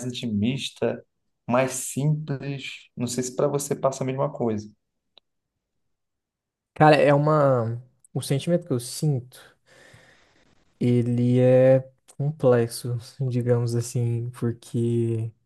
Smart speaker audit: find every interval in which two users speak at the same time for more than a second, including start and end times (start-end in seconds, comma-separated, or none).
none